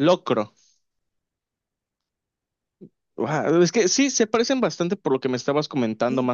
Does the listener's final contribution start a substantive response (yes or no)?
yes